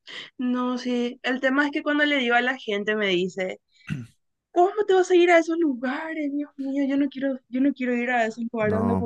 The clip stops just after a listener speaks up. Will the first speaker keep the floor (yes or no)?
yes